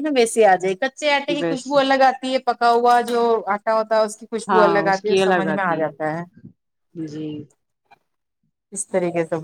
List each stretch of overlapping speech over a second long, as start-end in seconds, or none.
4.5-5.8